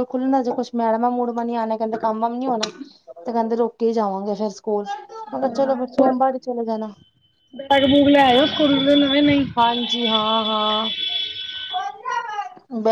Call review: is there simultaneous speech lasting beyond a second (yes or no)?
no